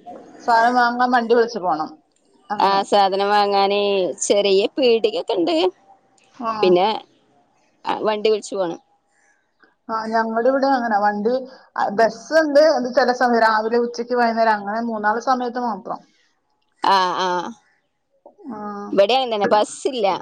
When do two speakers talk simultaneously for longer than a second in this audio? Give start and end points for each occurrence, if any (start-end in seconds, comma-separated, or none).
none